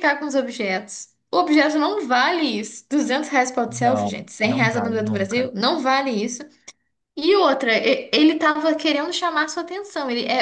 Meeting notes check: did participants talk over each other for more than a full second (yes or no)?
yes